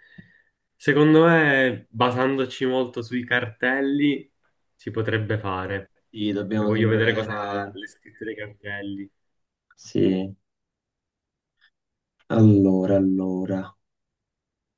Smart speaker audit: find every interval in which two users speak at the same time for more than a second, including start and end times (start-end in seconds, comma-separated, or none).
6.6-7.8